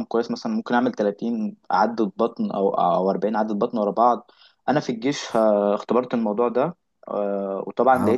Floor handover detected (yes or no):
no